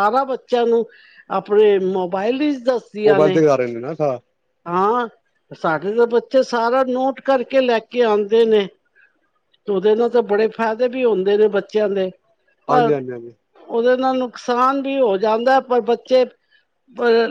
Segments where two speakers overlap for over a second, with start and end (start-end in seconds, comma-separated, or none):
none